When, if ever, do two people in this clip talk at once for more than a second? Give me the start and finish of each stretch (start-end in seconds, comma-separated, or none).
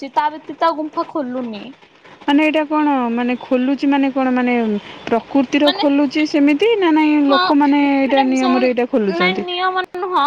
8.1-9.5